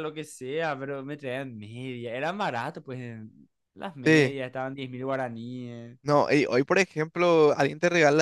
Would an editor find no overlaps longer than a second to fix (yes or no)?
yes